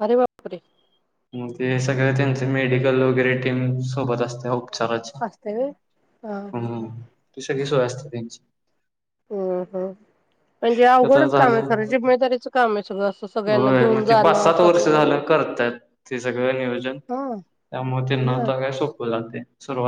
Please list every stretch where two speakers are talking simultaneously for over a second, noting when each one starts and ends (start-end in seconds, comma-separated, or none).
13.5-15.2